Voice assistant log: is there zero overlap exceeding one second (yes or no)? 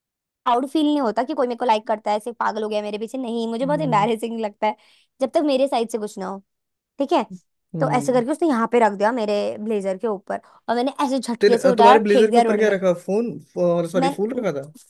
no